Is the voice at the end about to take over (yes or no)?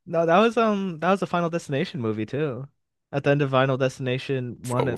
yes